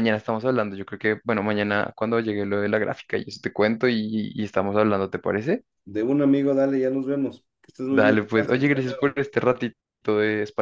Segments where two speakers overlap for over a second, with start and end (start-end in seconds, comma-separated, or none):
7.9-9.2